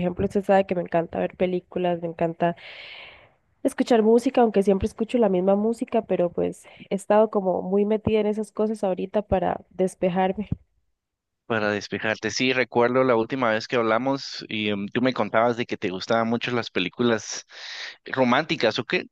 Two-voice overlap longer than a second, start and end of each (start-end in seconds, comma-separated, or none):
none